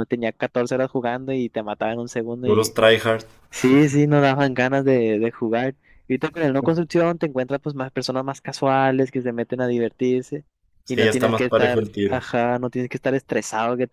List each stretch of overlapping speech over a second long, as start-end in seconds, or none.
10.9-12.2